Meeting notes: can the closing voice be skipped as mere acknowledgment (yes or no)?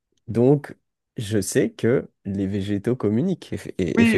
no